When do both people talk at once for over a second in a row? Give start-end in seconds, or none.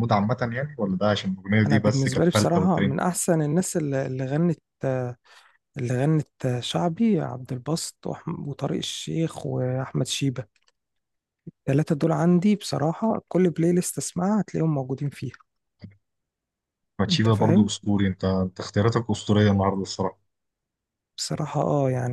1.6-3.0